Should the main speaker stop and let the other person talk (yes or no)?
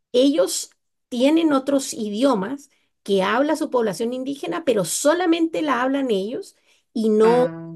no